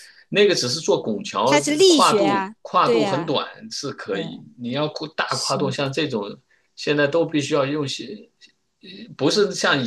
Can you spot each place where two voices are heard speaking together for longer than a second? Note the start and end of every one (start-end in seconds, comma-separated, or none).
1.4-3.4